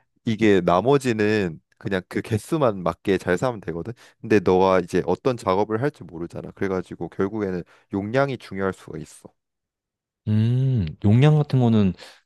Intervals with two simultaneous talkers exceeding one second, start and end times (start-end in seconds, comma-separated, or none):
none